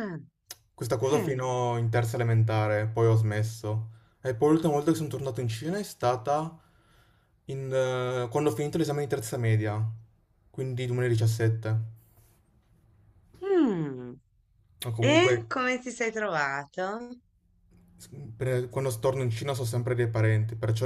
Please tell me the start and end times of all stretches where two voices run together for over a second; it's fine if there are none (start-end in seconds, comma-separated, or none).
none